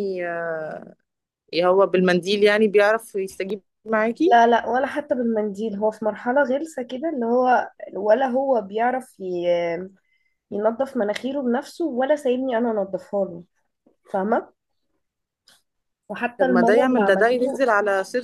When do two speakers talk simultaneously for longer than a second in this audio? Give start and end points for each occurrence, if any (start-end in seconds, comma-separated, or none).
16.4-17.6